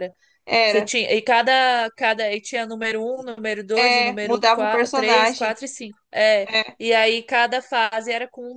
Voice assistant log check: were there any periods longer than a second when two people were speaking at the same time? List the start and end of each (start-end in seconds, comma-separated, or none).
3.8-5.6